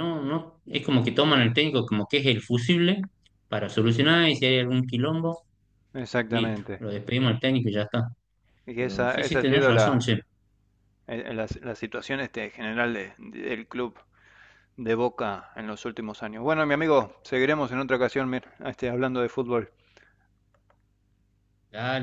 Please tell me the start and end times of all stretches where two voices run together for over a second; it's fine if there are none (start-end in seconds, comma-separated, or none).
8.8-10.1